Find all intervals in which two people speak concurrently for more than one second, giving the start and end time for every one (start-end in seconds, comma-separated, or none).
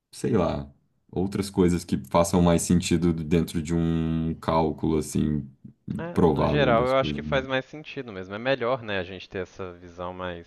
6.1-7.4